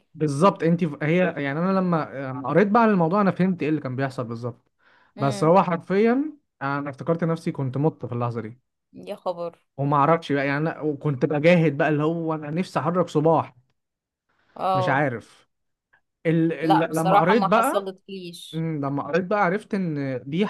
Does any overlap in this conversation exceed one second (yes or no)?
yes